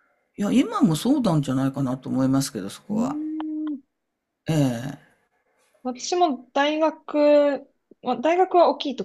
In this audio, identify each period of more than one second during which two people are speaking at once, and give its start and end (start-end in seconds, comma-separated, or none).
none